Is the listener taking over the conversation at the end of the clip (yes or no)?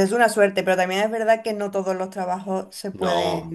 no